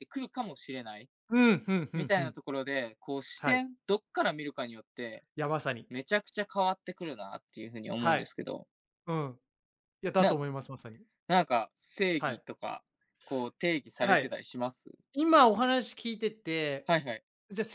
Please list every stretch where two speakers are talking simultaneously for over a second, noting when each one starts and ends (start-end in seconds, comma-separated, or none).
none